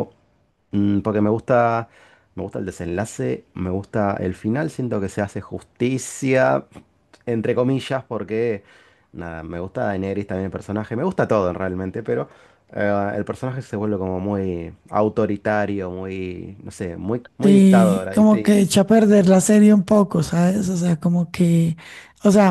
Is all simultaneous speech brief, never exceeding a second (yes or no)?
no